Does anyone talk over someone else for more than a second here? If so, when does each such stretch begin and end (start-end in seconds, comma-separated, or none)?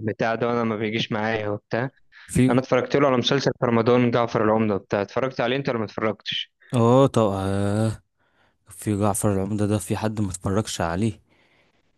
none